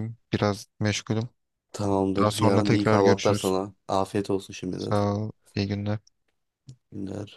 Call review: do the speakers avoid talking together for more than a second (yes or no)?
no